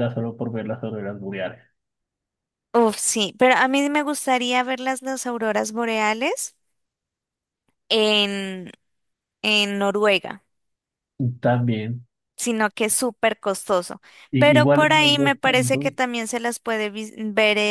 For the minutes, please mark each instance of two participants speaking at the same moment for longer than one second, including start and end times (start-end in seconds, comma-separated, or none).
14.4-15.9